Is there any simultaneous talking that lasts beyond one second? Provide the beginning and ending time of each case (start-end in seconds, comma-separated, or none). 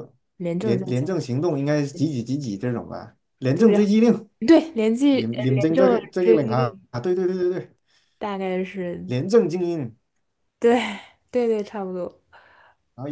5.1-6.8